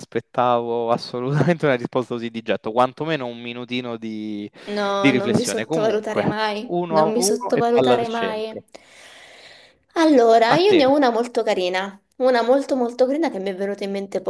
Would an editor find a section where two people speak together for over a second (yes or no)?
yes